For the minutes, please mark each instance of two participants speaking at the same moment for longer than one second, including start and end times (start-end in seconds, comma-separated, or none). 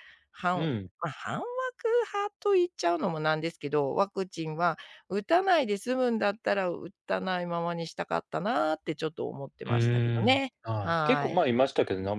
9.7-11.4